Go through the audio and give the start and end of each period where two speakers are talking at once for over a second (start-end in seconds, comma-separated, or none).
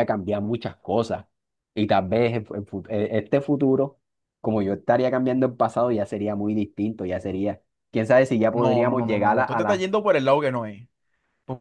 8.5-9.9